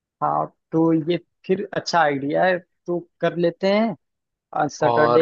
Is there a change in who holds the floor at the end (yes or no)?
yes